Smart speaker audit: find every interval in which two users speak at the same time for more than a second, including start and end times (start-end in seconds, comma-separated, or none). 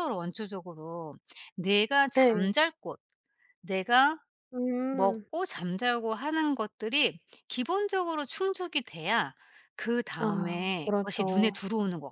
10.2-11.6